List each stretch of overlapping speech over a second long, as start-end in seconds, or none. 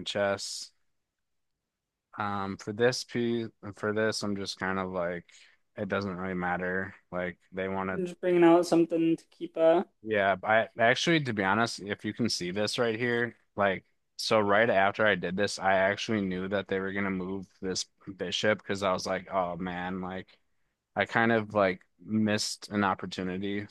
none